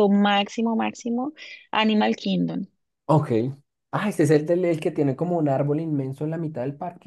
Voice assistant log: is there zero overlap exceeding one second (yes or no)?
yes